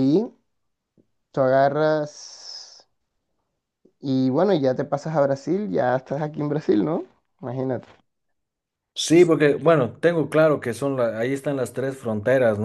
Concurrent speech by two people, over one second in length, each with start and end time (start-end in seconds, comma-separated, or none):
none